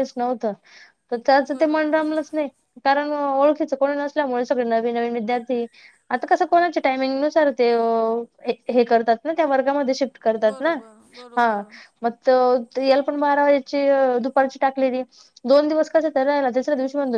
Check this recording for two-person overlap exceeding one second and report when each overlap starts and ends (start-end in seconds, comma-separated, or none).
none